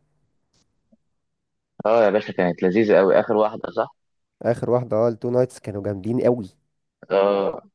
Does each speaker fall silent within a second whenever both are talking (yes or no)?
yes